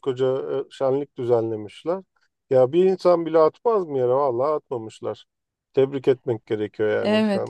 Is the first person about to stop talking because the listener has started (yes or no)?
yes